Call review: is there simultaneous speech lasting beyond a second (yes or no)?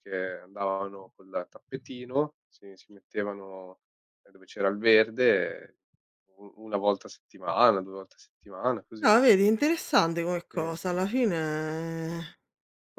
no